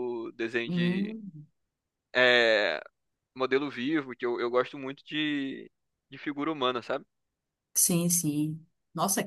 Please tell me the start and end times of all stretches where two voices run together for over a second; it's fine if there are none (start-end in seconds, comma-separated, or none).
none